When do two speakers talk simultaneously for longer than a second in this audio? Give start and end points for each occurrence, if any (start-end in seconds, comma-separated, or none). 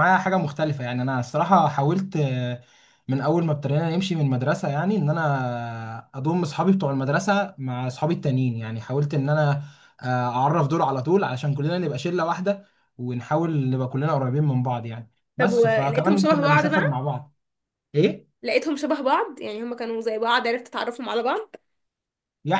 15.4-17.0